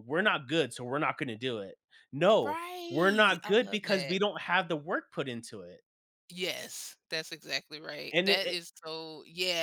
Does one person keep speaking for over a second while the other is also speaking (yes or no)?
yes